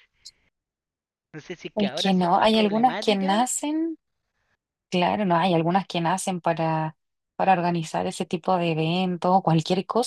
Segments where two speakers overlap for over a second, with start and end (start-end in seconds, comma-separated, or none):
1.7-3.4